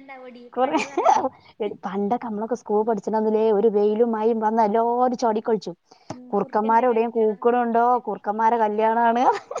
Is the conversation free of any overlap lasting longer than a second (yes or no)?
no